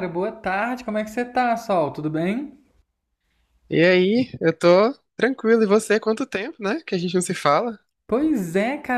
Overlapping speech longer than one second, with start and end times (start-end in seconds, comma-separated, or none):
none